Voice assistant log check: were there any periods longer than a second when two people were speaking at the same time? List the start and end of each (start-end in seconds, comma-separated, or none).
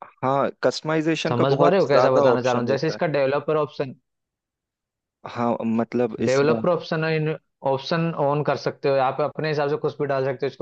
1.3-3.0